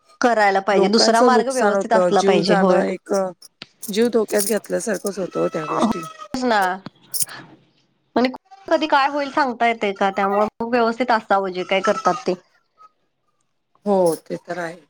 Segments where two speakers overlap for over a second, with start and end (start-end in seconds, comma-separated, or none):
0.8-2.8